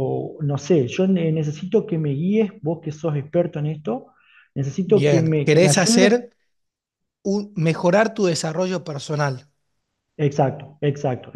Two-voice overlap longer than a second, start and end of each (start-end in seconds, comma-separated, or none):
4.8-6.1